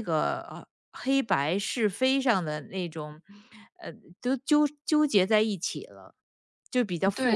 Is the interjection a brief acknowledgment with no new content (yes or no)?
no